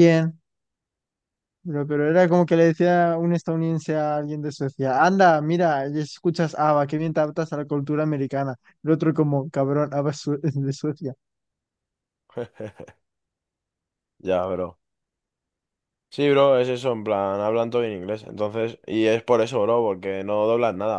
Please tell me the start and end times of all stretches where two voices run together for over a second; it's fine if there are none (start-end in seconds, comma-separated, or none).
none